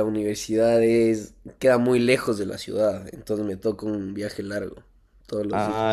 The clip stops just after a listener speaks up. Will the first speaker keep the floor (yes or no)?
no